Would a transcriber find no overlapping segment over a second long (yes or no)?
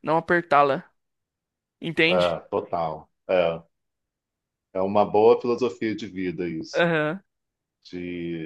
yes